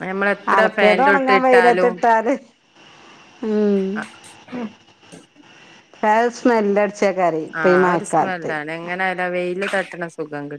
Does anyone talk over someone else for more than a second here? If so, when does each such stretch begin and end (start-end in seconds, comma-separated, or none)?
0.6-1.9